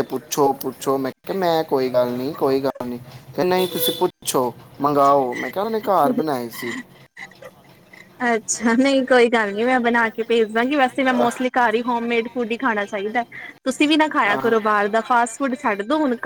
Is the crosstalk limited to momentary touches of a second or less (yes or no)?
yes